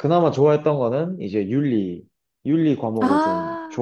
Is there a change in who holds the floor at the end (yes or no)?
no